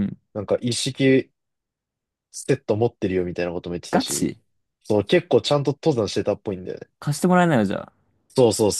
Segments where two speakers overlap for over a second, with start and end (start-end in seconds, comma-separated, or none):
none